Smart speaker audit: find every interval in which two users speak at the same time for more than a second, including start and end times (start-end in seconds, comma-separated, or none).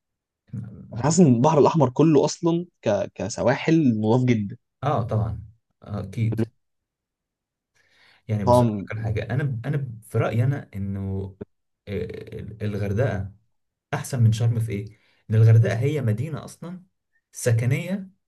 none